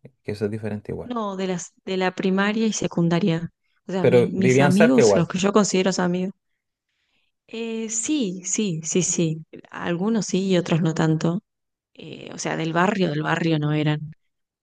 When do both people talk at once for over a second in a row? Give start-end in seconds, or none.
4.0-5.3